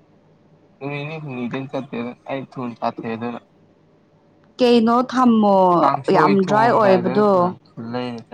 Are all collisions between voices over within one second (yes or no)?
no